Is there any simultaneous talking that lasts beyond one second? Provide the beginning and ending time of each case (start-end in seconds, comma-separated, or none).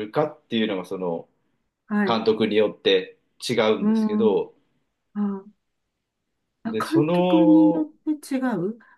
6.7-7.9